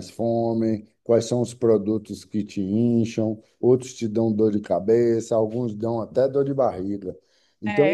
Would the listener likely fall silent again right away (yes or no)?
no